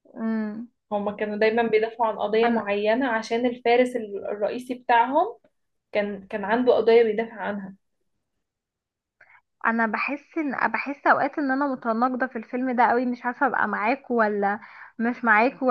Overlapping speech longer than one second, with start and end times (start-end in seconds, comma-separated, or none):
none